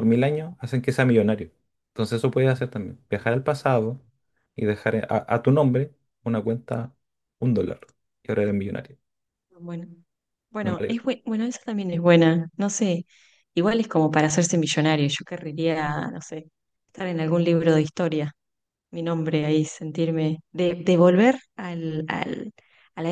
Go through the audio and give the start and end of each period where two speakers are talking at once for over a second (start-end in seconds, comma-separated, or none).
none